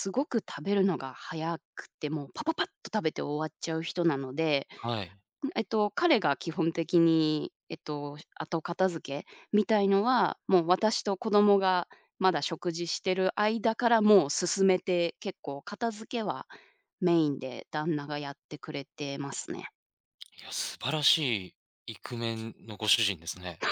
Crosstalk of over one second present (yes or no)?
no